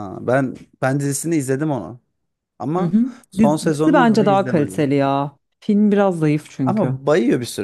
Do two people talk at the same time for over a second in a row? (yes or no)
yes